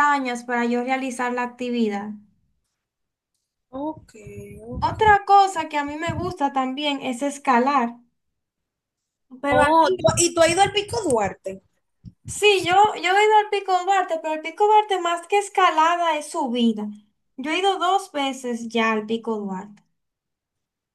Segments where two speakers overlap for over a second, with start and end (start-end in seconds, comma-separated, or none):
none